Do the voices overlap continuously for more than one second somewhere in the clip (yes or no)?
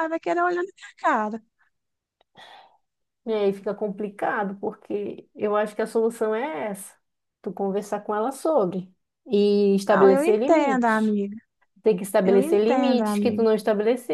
yes